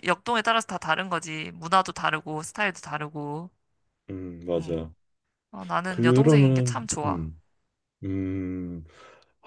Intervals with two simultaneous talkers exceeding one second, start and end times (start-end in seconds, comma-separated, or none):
5.9-7.3